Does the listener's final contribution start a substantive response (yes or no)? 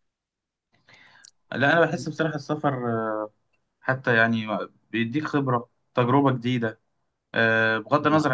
no